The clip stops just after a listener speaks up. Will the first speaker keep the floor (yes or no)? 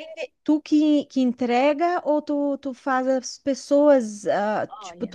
yes